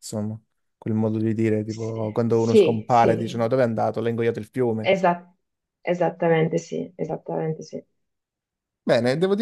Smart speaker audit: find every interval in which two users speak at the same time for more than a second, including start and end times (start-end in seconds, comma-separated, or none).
1.6-3.5